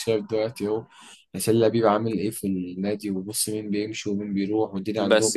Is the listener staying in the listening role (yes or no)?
no